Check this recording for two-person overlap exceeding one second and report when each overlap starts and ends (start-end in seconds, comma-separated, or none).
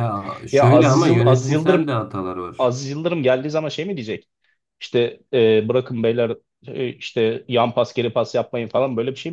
0.5-1.9